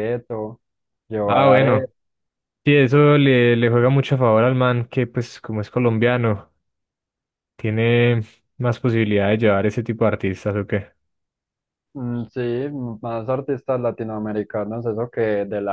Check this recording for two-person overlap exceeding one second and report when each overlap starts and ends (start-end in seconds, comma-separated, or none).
none